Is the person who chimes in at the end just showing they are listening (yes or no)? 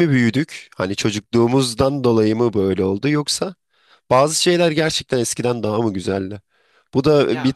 no